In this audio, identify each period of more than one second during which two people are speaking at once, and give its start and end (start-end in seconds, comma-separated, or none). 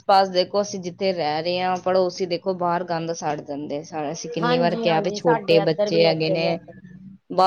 4.4-6.5